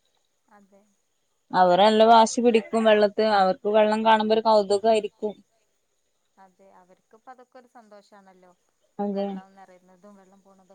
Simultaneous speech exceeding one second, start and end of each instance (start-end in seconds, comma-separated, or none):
none